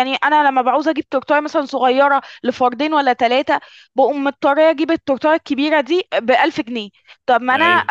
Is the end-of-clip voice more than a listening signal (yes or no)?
no